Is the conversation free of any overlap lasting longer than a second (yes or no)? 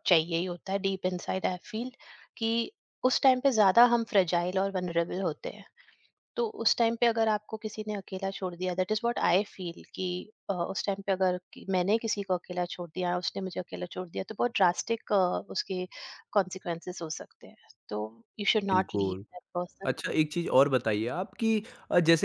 yes